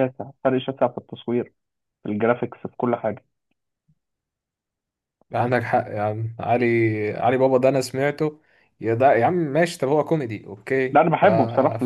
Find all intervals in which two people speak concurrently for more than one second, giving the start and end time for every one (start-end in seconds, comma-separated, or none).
none